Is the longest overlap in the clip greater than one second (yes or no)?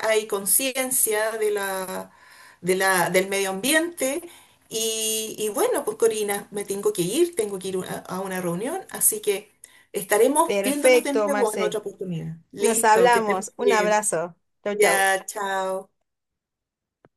yes